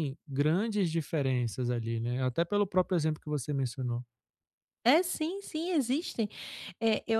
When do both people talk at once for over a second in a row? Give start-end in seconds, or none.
none